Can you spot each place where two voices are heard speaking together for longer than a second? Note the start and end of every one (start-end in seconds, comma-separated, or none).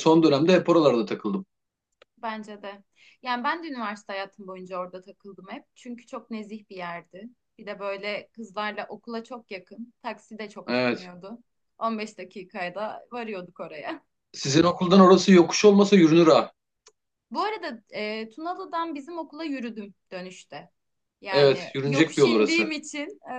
21.3-22.7